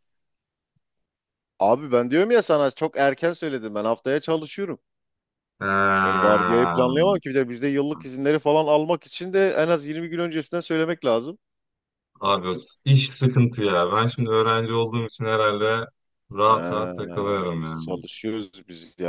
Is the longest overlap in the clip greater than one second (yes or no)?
no